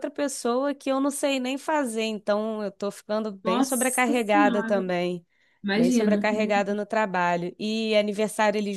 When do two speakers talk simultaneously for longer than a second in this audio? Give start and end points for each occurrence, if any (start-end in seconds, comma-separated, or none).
3.4-4.8